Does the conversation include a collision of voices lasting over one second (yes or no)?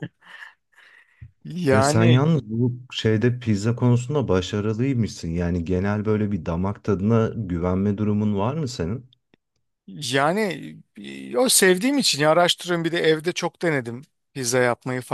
no